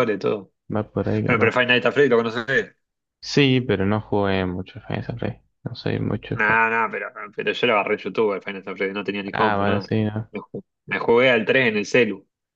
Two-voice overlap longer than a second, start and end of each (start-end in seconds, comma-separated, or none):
none